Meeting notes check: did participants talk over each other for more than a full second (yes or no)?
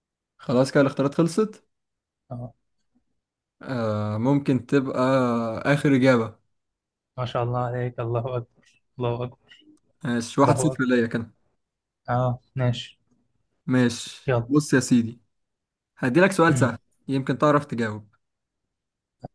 no